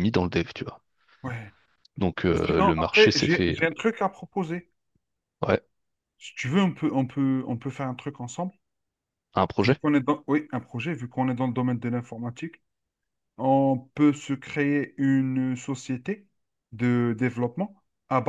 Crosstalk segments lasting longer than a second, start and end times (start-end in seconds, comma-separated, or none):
2.3-3.6